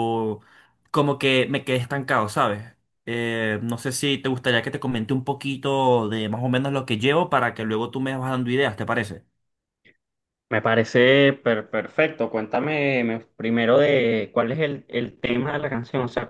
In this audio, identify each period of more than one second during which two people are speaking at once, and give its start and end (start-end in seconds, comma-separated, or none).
none